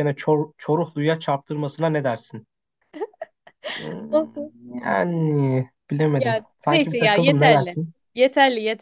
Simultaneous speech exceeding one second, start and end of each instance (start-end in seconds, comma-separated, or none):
6.1-7.8